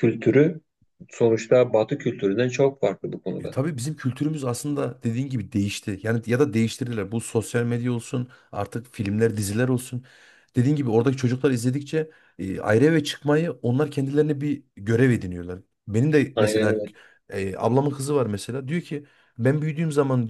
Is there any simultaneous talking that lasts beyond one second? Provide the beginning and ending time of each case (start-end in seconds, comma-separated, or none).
none